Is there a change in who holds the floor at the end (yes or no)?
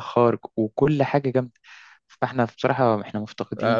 yes